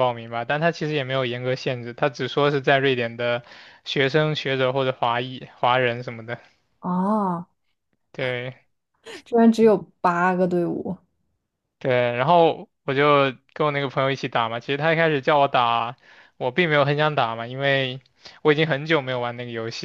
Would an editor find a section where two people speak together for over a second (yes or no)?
no